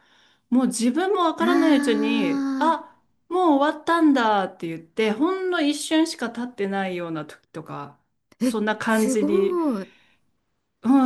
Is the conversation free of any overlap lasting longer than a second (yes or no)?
no